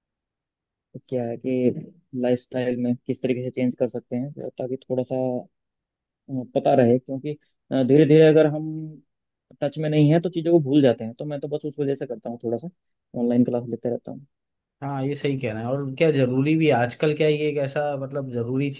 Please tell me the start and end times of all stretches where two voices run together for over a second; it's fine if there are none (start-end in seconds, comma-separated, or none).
none